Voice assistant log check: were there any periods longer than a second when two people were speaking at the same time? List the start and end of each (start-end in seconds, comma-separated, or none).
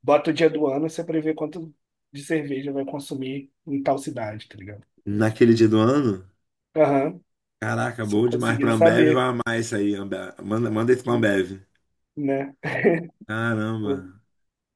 8.0-9.2